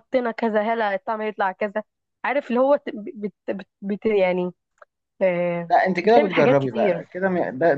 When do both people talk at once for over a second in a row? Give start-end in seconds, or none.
5.7-7.0